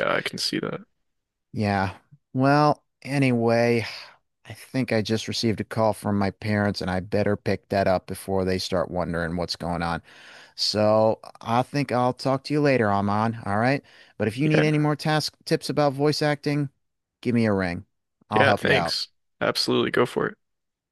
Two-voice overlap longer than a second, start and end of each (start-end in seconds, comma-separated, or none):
none